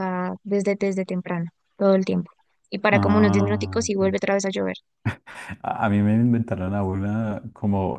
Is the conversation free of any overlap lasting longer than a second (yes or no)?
no